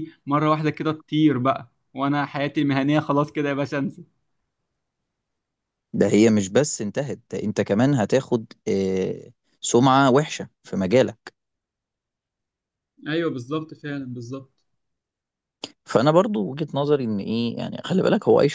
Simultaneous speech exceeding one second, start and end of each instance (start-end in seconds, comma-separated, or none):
none